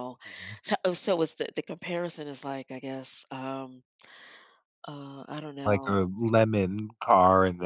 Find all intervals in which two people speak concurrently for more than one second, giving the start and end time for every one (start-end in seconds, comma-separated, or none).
none